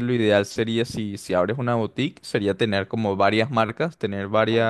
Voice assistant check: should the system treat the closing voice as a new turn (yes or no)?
no